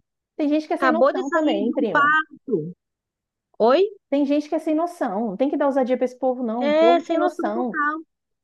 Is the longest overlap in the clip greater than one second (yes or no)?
yes